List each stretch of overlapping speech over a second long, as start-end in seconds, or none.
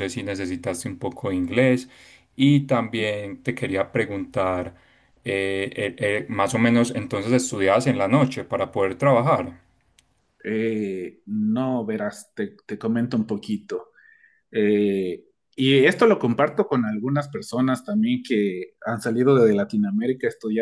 none